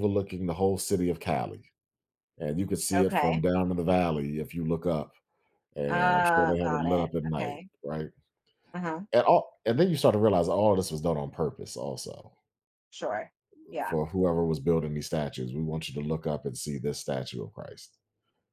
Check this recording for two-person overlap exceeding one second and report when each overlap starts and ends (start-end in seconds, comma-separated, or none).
5.9-7.7